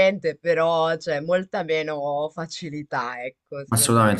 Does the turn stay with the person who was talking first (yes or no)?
no